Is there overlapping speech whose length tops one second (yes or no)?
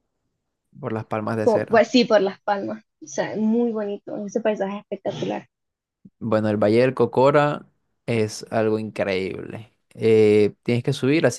no